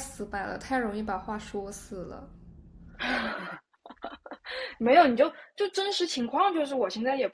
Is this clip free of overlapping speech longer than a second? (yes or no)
yes